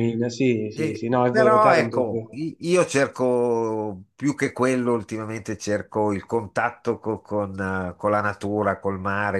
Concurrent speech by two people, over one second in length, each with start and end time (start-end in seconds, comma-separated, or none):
0.7-2.4